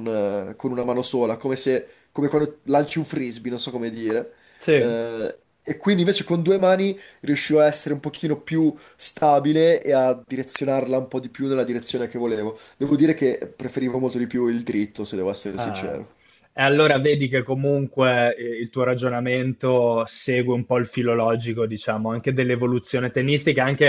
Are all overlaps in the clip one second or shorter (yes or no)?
yes